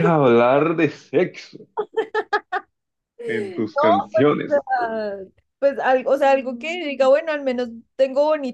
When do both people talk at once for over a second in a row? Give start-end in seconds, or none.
3.3-4.7